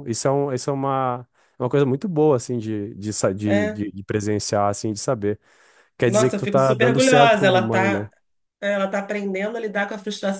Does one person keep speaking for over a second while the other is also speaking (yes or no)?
yes